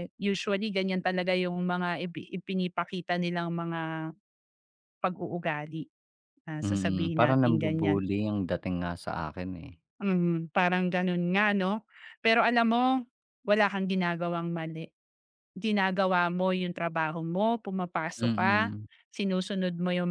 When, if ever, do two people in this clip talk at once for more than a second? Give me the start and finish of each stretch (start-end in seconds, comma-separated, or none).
6.7-8.0